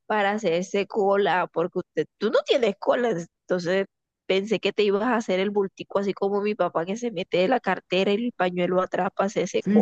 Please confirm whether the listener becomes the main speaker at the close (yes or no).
yes